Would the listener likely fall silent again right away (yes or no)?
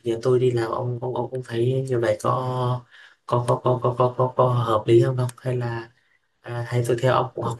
yes